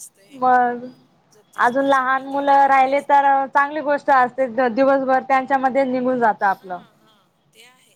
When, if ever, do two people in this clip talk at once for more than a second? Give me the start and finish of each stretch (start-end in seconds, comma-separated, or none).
1.6-3.2